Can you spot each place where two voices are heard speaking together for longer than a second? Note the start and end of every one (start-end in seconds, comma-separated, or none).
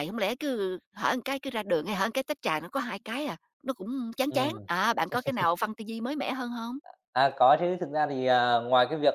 none